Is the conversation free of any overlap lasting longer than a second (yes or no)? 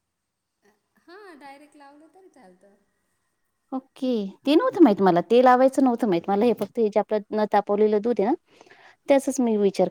yes